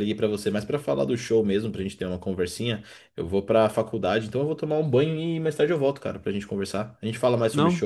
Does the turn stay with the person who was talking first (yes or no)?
yes